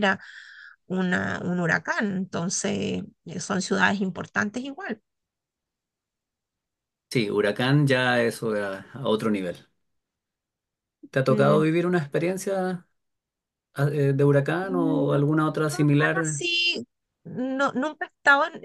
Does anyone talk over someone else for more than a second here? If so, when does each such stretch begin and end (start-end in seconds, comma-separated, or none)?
14.6-16.4